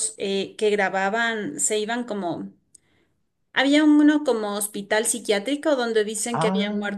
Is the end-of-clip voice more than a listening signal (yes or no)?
no